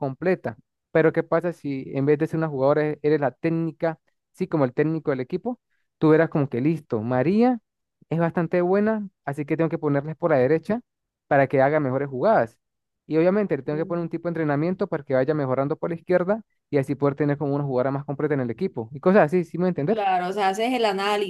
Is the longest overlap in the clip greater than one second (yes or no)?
no